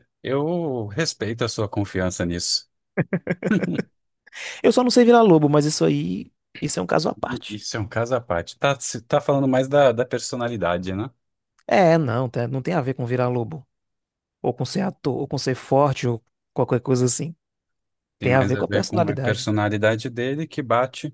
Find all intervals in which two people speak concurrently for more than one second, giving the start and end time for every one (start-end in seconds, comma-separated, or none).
18.2-19.5